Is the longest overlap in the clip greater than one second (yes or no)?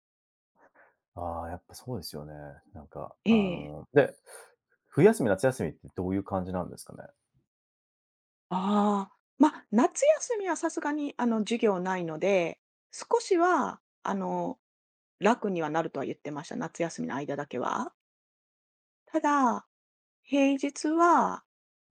no